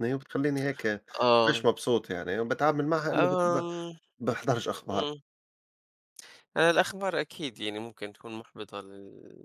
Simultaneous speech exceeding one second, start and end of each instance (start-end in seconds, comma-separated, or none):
none